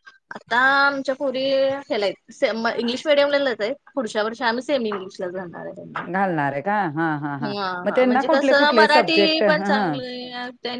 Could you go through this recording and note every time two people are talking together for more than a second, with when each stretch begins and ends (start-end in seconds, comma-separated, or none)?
7.5-10.0